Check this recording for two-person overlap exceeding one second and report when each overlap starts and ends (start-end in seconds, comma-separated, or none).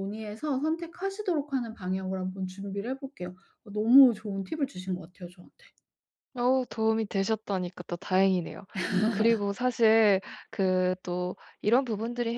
none